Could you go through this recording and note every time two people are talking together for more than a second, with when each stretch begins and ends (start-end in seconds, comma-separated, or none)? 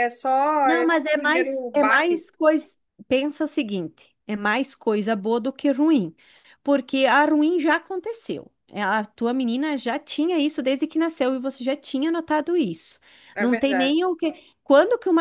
0.6-2.2